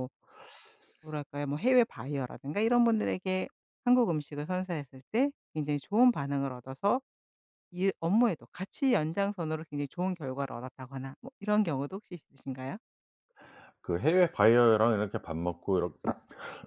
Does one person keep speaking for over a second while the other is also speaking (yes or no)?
no